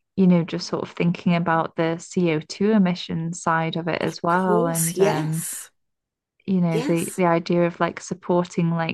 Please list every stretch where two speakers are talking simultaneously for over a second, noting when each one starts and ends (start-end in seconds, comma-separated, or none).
4.0-5.5